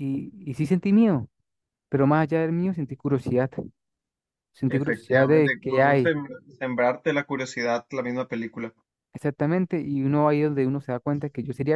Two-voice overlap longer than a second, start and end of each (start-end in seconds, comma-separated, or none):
4.7-6.1